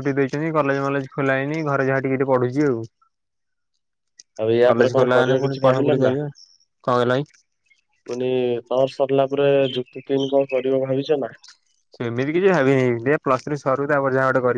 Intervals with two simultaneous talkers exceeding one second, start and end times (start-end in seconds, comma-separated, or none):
4.7-6.2